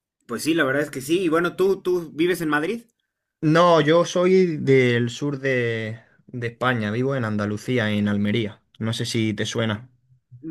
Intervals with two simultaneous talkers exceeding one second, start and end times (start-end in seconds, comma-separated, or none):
none